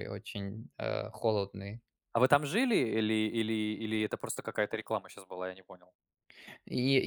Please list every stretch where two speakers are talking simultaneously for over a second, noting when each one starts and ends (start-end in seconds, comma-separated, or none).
none